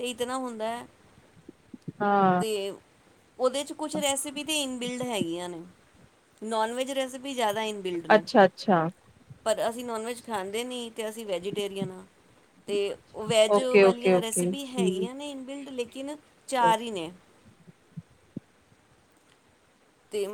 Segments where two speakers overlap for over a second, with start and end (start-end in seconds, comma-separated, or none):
13.6-15.1